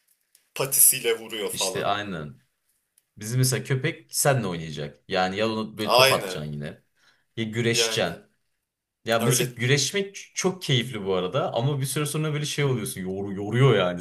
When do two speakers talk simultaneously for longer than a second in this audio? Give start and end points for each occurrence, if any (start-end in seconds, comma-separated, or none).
none